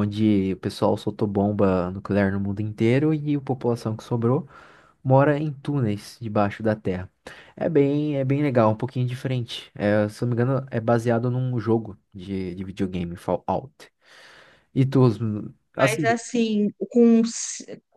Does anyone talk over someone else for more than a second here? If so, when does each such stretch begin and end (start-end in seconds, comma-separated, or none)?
none